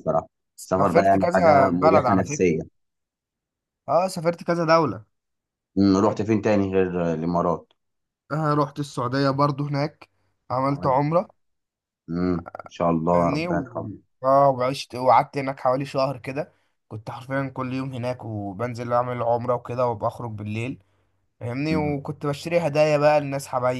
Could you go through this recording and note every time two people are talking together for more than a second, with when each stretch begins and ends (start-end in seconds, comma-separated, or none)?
0.6-2.5